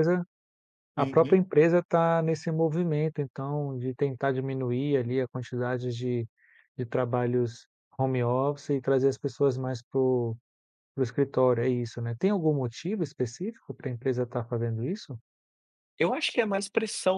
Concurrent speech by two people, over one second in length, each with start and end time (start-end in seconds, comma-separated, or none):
none